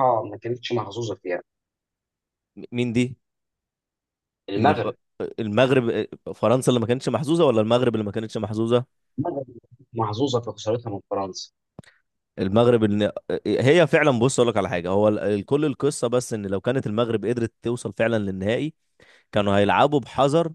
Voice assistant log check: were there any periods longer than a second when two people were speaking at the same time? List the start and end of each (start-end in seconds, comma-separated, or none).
none